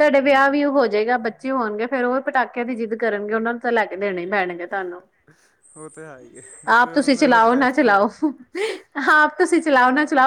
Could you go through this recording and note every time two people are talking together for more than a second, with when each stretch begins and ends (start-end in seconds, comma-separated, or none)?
6.8-8.1